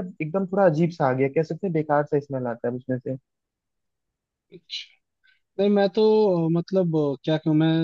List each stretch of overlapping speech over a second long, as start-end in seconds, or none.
none